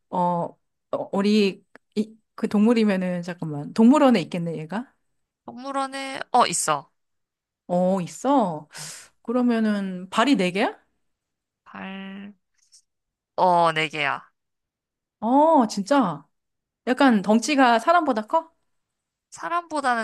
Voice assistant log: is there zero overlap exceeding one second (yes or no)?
yes